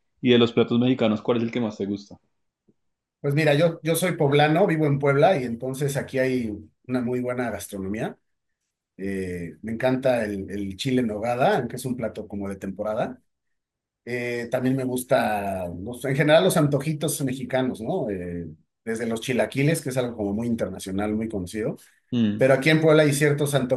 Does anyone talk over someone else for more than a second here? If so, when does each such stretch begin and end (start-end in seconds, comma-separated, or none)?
none